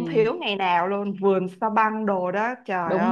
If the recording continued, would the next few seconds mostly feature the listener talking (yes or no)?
yes